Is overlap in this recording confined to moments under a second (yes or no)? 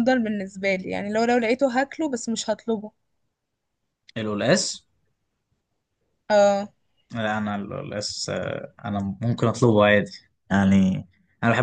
yes